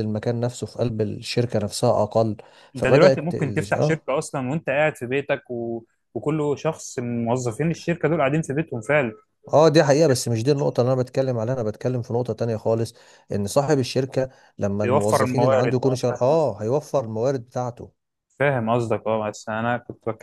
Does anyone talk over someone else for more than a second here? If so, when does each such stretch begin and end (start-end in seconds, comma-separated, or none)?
2.8-4.0, 14.8-16.5